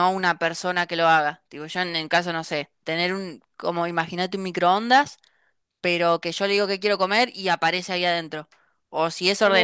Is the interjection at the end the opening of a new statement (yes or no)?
no